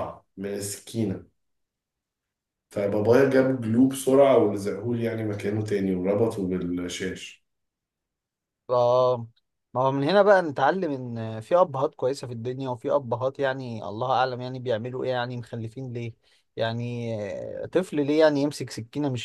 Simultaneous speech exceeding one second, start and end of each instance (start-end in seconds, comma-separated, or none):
none